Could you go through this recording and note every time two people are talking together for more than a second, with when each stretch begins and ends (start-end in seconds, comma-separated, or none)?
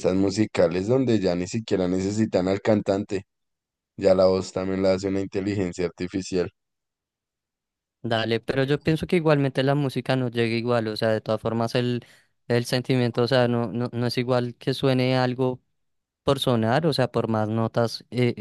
none